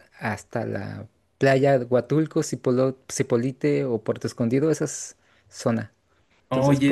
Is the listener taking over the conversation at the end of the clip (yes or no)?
yes